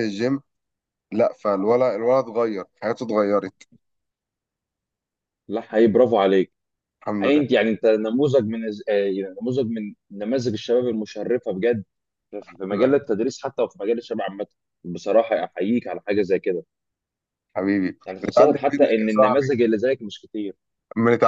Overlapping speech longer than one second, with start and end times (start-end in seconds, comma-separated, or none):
18.1-19.6